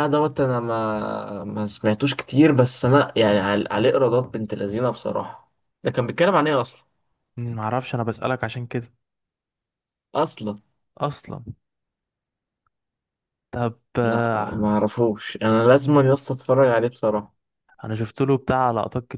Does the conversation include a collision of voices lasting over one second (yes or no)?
no